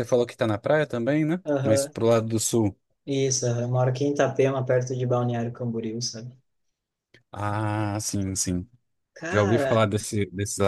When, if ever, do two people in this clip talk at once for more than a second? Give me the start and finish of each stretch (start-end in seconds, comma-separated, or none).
none